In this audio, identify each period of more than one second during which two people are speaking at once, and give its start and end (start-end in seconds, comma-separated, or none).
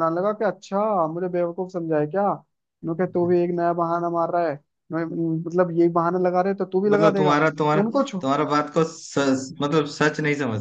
none